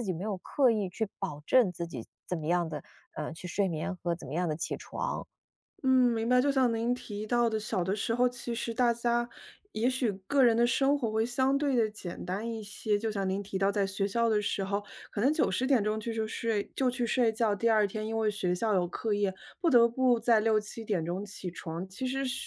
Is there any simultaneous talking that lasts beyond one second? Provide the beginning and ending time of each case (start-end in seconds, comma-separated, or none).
none